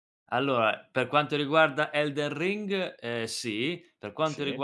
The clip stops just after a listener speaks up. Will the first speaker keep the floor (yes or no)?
yes